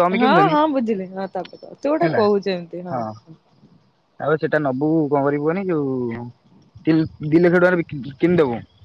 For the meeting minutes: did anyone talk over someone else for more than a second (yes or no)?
no